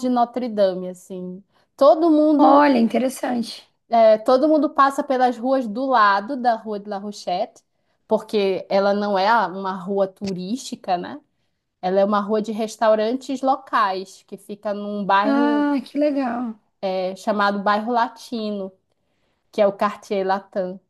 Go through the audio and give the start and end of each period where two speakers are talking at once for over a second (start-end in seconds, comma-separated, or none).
none